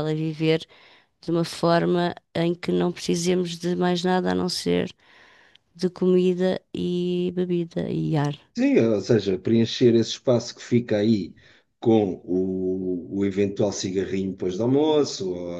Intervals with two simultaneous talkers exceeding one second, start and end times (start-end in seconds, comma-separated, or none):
none